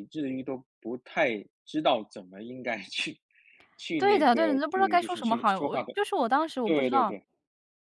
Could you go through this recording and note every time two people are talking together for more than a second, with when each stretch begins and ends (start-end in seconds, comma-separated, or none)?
4.0-5.9